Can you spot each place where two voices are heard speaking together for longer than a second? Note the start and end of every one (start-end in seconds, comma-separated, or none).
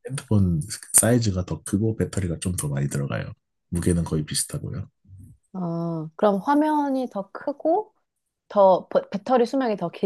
none